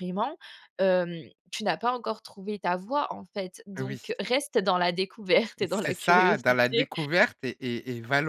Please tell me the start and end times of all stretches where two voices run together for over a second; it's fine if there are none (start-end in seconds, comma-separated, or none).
5.7-6.9